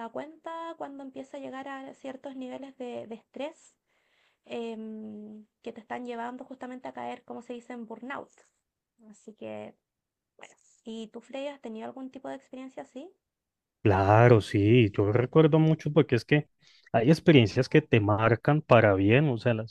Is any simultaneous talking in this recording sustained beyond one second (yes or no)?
no